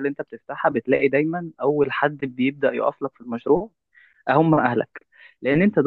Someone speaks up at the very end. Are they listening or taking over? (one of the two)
listening